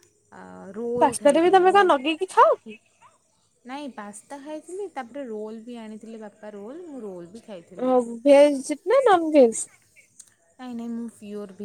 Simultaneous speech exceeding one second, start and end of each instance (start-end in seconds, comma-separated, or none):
none